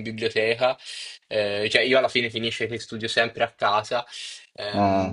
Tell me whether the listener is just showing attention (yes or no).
yes